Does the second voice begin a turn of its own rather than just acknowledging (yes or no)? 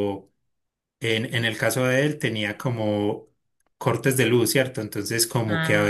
no